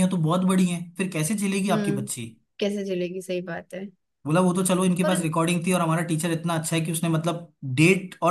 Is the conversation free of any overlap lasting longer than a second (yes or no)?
yes